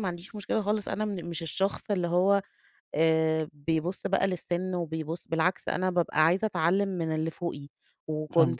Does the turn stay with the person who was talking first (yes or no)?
yes